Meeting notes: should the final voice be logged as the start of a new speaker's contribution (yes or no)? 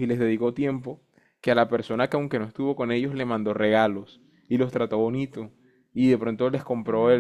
no